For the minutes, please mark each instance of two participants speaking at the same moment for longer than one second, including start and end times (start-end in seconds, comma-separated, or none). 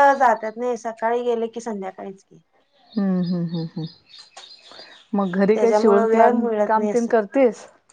5.5-7.1